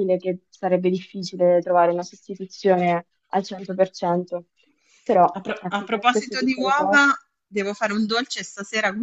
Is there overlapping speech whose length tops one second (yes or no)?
yes